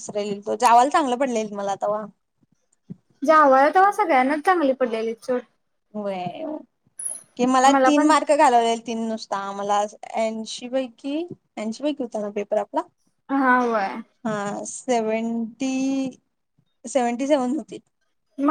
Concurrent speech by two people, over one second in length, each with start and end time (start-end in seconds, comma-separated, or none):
none